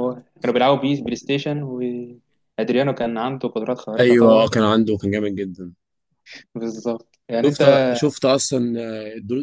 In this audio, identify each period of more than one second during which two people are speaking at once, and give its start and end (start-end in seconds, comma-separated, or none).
none